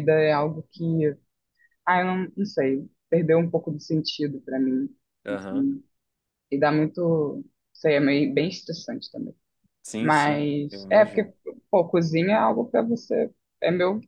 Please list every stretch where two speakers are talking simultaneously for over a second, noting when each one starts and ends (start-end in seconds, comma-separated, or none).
10.0-11.3